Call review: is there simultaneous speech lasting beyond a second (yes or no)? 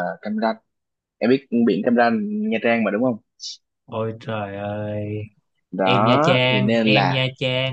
yes